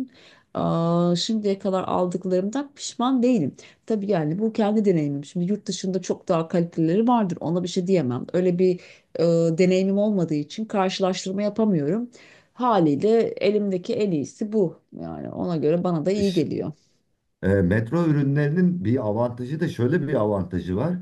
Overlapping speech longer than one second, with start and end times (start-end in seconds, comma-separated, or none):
none